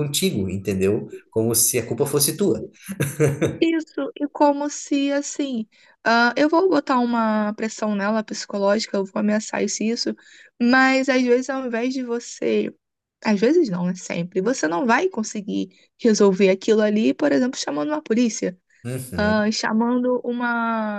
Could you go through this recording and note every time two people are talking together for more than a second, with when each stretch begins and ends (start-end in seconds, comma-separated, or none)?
none